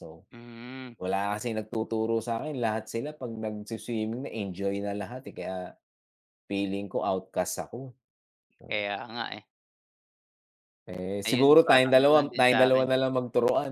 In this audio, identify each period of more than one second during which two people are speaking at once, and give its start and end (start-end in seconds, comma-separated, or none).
11.3-12.9